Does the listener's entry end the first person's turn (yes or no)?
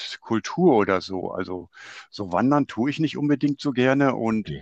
no